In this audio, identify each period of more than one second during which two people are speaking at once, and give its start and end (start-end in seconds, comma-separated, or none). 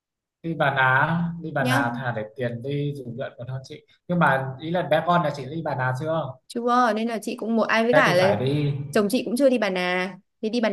none